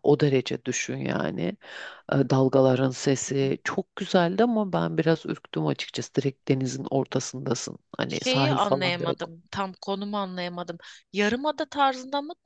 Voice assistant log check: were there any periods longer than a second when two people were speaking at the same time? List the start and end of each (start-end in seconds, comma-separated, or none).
8.1-9.3